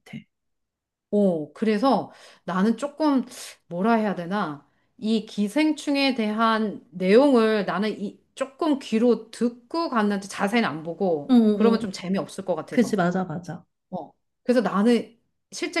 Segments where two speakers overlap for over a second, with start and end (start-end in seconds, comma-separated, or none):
none